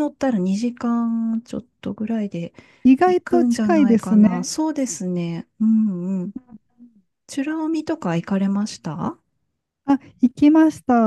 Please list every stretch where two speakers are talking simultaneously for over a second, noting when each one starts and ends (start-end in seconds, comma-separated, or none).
3.0-4.5